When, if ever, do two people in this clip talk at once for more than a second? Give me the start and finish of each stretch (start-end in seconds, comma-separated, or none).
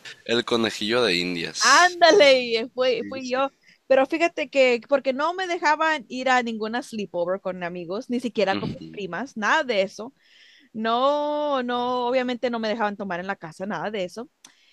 none